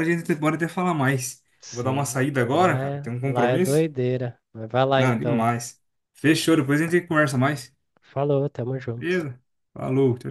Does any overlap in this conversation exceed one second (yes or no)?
yes